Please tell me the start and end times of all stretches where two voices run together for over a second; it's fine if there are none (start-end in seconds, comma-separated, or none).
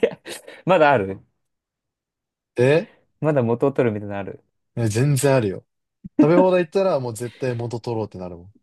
none